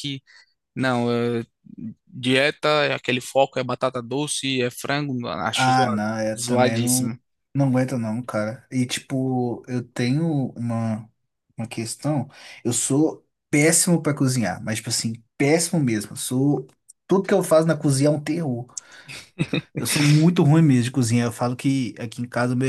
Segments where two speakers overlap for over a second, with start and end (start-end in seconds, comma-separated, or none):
5.5-7.1